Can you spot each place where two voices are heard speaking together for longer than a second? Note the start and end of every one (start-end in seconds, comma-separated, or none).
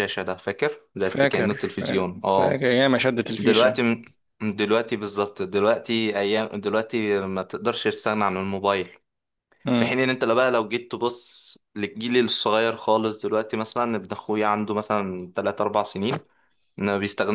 1.0-2.6